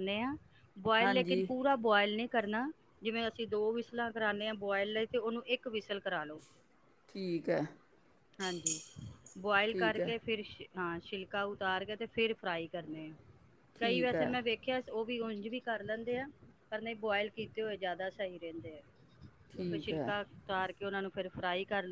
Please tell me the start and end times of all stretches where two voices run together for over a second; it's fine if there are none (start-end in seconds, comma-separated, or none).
none